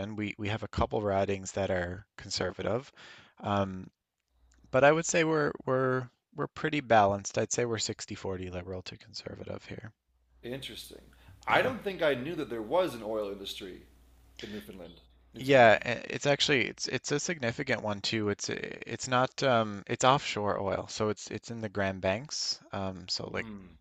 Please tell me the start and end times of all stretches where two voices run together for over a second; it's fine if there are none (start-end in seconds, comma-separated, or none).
none